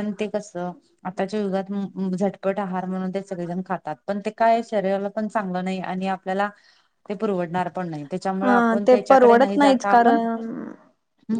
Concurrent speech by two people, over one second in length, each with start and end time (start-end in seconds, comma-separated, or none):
8.4-10.2